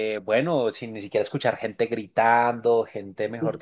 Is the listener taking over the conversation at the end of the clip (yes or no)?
no